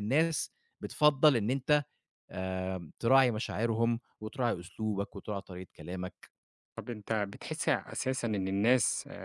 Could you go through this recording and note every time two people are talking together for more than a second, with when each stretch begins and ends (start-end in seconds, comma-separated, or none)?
none